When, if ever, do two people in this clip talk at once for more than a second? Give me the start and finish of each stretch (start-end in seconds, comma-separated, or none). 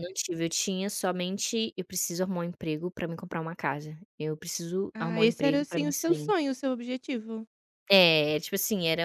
4.9-6.3